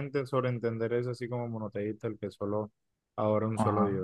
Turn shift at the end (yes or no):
yes